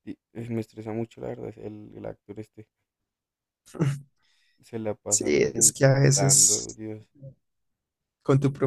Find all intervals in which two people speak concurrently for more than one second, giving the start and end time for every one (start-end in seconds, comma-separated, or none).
5.1-6.8